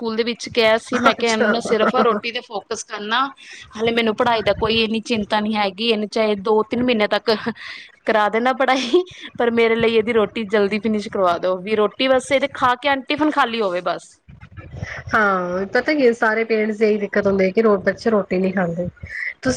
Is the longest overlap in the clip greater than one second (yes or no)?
no